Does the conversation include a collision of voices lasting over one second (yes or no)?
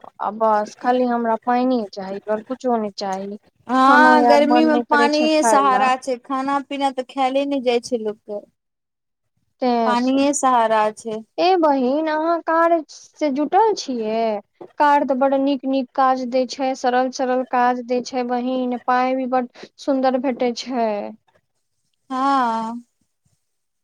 yes